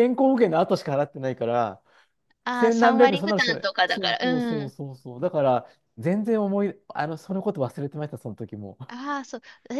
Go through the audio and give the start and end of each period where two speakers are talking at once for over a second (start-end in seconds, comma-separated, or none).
2.5-4.8